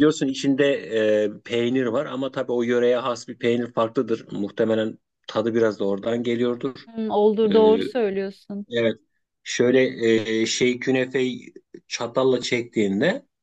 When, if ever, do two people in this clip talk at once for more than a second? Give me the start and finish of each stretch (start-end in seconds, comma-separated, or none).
none